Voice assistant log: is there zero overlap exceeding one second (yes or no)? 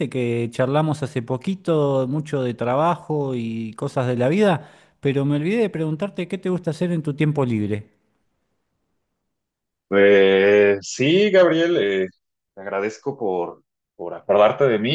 yes